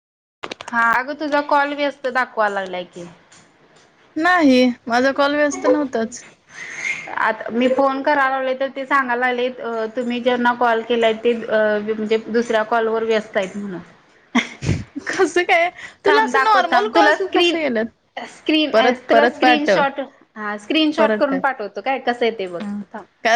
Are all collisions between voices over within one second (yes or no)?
no